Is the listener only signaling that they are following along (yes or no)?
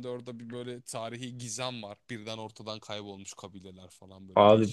no